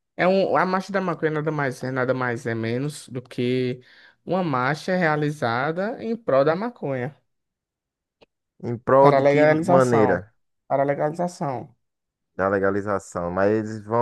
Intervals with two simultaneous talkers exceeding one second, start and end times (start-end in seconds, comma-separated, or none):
9.0-10.2